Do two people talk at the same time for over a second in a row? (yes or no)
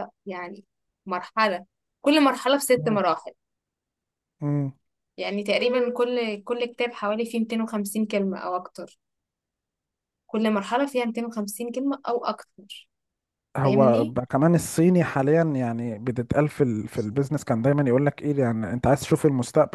no